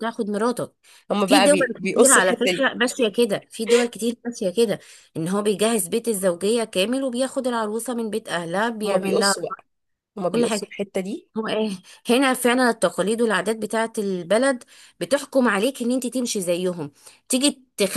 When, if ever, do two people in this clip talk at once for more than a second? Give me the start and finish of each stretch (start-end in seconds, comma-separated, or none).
1.2-2.7